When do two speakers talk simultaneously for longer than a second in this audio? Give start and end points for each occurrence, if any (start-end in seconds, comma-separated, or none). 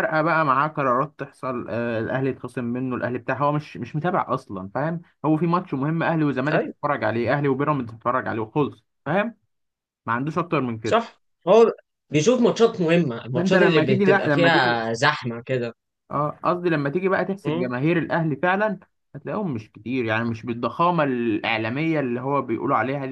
13.3-14.8